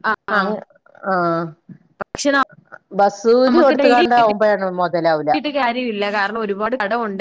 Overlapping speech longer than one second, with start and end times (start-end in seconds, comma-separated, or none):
3.5-5.3